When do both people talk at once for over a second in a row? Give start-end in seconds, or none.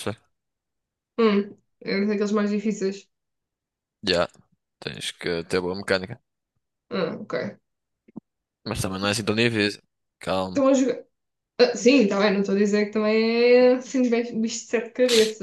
none